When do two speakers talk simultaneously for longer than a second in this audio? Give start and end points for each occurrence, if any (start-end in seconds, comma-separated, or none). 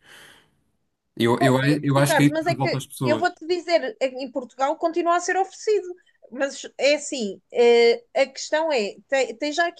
1.4-3.3